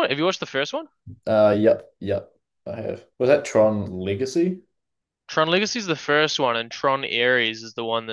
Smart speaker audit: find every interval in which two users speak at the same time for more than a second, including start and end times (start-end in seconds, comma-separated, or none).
none